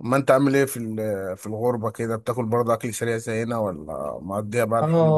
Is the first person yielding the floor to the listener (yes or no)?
yes